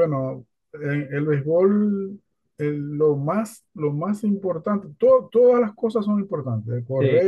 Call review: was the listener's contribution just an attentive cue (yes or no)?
yes